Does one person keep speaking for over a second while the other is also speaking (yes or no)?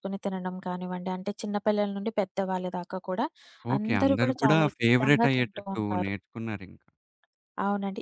yes